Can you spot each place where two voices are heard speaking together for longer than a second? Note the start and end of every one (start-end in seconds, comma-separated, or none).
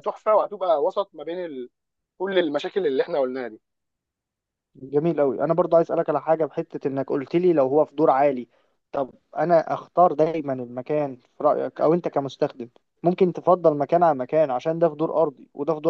none